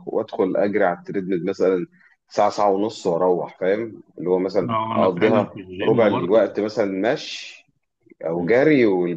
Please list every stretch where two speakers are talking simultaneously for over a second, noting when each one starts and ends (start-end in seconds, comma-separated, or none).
4.7-6.5